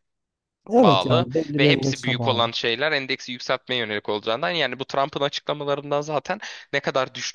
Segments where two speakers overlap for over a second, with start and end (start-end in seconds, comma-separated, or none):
0.8-2.5